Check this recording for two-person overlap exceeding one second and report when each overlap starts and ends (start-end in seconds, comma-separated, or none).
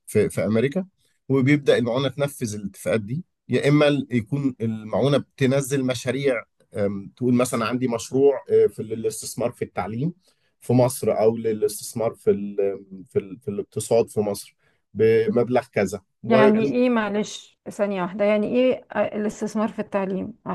none